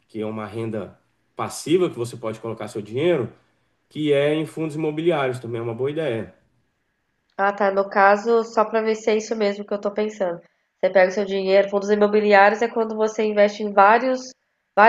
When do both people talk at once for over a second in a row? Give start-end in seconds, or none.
none